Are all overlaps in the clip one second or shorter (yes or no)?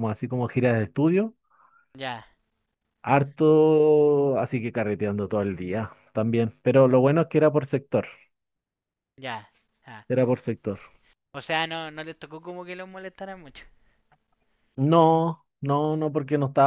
yes